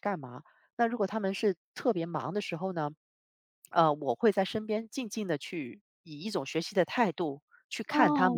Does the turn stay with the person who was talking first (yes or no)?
no